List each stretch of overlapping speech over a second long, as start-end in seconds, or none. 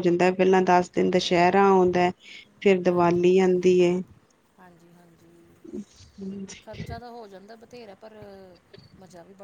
none